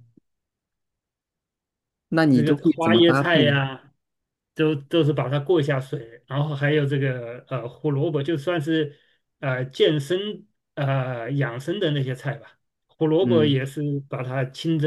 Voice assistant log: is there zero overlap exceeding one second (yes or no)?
no